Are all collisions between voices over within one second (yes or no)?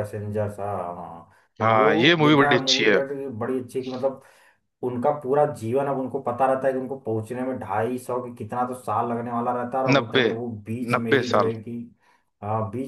no